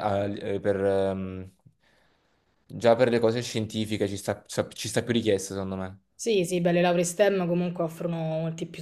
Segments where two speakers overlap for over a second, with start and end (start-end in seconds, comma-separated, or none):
none